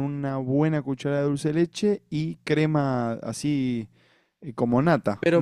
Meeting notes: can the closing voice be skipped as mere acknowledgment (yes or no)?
no